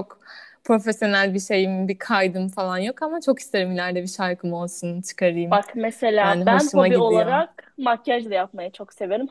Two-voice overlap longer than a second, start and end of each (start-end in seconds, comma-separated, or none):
6.2-7.4